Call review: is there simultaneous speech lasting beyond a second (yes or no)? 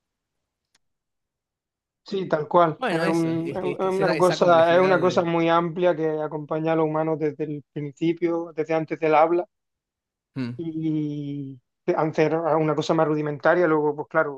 yes